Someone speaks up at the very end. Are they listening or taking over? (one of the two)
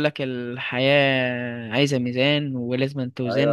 taking over